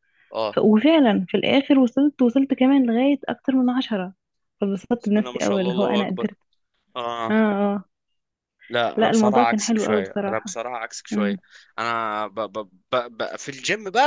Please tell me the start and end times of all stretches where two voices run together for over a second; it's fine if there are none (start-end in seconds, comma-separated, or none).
5.0-6.3, 9.0-10.5